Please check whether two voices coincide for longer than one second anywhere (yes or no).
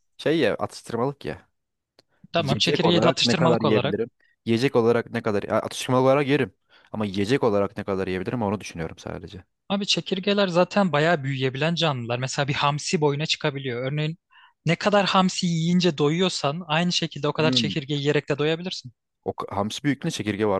yes